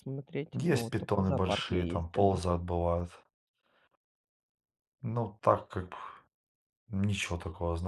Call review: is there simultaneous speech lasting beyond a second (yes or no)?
yes